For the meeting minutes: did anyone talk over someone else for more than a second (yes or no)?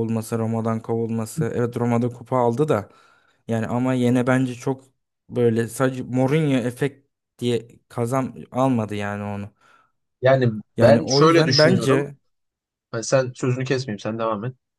yes